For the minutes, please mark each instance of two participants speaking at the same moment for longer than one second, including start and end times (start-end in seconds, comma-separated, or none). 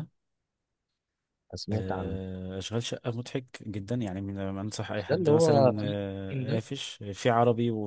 5.1-6.6